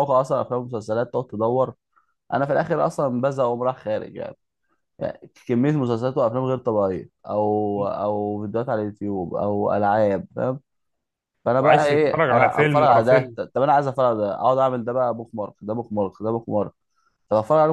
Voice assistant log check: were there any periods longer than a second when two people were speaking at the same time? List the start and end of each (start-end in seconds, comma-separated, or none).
11.6-13.4